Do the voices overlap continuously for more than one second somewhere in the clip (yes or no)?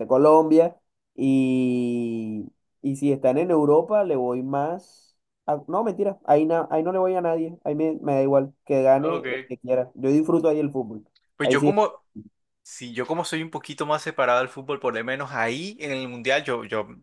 no